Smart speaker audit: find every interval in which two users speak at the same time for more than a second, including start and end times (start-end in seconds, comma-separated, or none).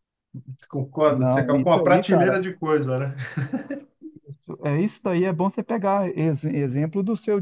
1.1-2.4